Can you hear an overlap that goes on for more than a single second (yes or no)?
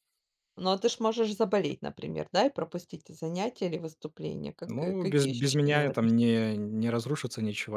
yes